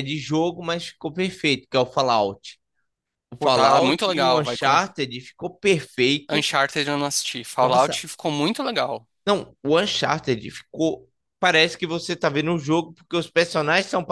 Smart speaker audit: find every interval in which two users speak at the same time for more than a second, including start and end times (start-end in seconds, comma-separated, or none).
3.4-4.9